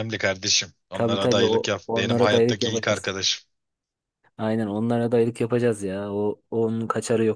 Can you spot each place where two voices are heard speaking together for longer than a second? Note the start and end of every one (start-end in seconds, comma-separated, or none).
0.9-3.1